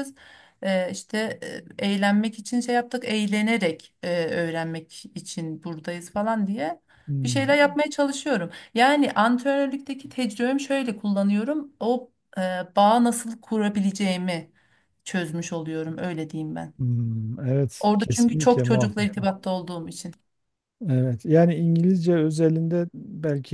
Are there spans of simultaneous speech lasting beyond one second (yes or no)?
yes